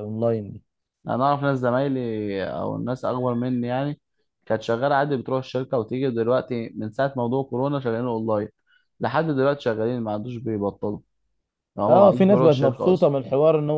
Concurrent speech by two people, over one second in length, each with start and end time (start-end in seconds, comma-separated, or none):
11.9-13.1